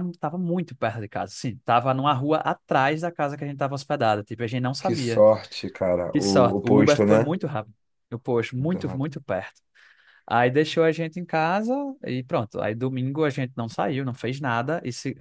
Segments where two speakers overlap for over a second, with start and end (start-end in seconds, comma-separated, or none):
6.1-7.3